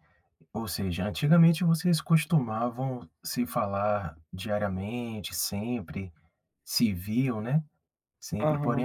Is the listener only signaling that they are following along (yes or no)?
yes